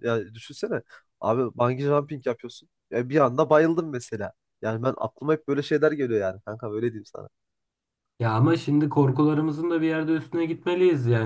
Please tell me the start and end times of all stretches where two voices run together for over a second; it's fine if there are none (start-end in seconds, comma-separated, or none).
none